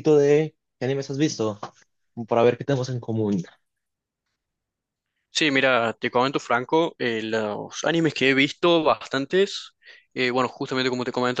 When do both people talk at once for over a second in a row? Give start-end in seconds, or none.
none